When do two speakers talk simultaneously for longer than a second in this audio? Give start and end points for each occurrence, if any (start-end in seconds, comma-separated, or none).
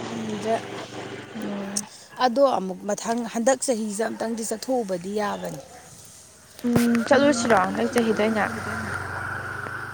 none